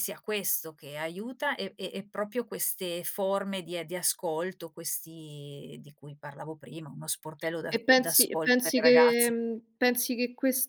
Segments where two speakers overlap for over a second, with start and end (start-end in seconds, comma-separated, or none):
7.7-9.3